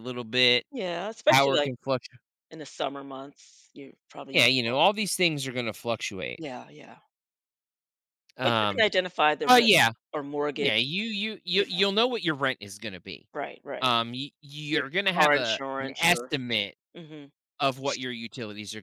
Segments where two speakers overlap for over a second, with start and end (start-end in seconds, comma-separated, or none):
14.7-16.3